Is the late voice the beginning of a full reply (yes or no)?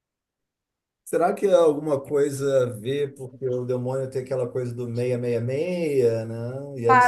yes